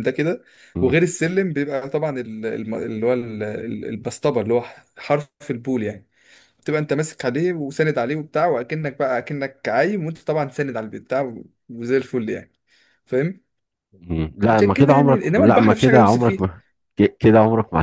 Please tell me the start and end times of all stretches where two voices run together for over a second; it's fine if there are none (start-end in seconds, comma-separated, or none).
14.5-16.4